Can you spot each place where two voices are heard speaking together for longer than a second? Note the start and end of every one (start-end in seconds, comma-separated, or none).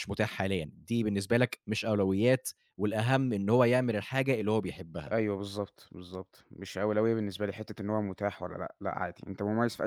none